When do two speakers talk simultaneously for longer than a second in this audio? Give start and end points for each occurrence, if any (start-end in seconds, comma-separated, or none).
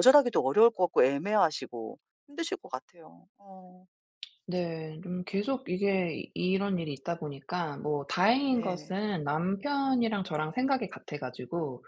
none